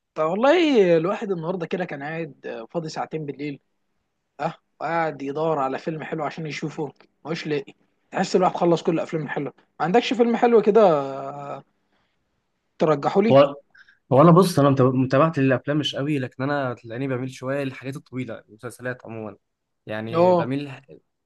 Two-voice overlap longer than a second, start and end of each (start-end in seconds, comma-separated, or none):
none